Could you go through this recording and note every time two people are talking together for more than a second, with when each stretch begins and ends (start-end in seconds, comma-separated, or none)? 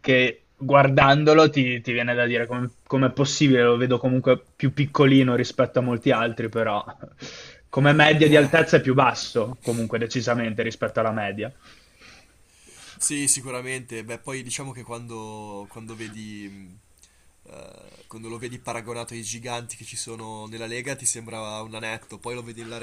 none